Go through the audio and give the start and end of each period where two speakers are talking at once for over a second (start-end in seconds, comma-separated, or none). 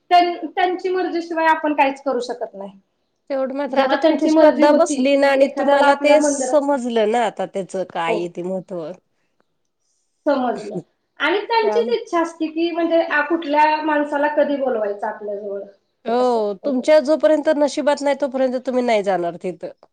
3.8-6.6